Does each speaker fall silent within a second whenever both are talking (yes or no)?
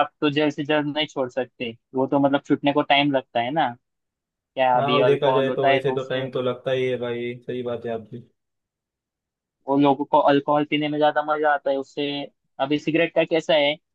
no